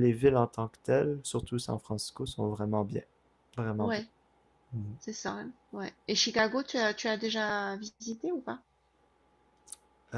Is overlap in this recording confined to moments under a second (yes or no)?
yes